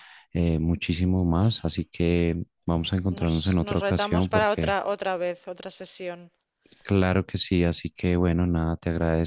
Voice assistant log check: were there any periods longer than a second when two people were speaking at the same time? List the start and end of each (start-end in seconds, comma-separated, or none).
3.2-4.8